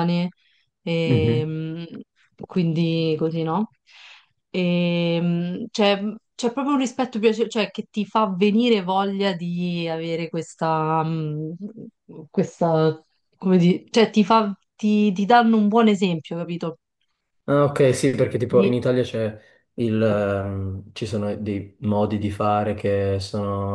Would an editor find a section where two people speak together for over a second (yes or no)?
no